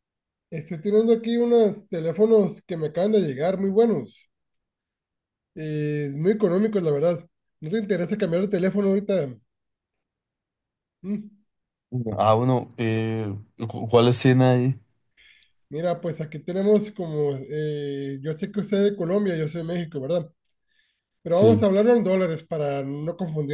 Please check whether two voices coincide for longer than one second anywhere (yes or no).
no